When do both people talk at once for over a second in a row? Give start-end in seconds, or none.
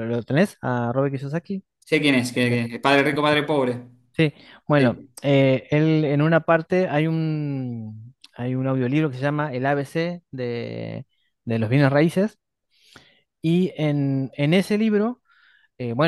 none